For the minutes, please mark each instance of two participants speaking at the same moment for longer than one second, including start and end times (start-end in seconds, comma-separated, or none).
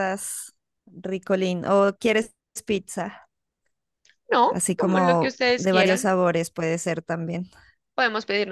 4.5-6.1